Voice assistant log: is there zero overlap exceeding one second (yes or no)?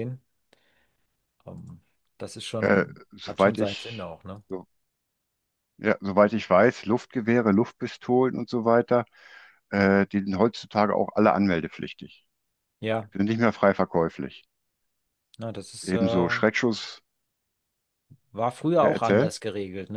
no